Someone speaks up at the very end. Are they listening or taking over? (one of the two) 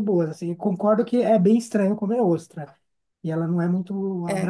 listening